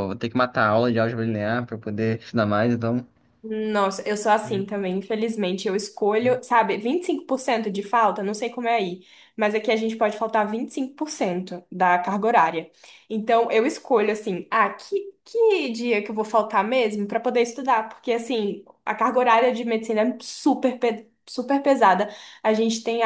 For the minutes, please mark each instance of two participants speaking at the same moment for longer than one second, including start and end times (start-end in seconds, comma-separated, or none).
none